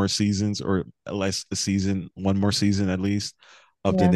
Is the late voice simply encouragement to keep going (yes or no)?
yes